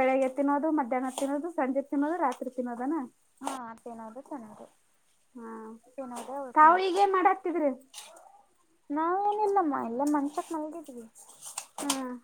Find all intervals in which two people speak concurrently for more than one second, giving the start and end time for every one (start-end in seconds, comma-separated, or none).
none